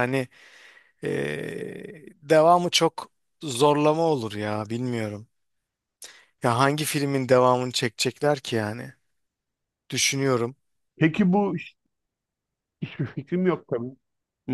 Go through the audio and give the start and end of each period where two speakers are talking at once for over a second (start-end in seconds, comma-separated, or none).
none